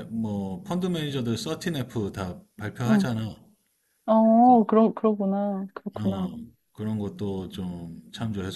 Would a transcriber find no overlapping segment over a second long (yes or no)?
yes